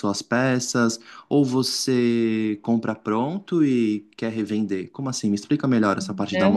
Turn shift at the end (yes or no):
yes